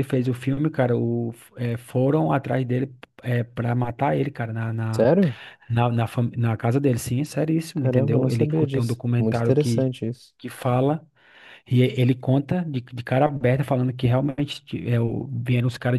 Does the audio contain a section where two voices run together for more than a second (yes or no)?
yes